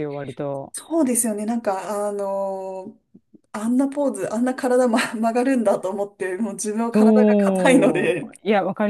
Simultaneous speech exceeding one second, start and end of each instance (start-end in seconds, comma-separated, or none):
6.9-8.3